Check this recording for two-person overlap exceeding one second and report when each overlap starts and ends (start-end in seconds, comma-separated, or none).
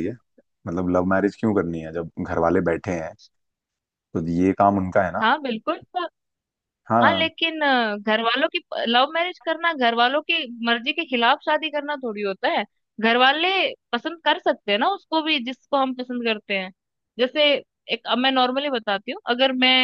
none